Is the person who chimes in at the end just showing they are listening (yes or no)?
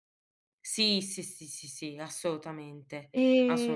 no